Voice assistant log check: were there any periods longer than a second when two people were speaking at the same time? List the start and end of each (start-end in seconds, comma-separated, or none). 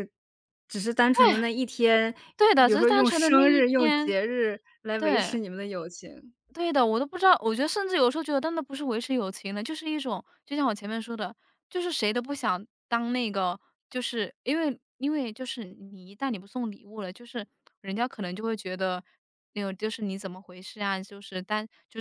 2.6-4.2